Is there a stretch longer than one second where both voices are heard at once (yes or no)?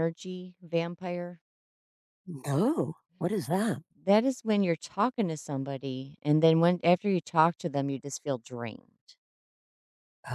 no